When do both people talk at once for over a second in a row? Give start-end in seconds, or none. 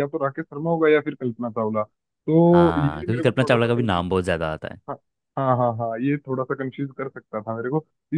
2.5-4.0